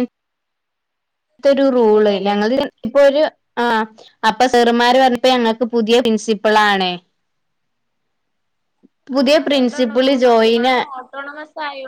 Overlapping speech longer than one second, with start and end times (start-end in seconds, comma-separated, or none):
9.2-10.8